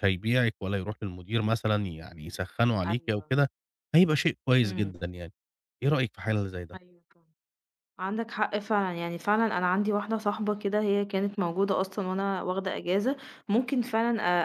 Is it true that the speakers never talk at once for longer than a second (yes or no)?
yes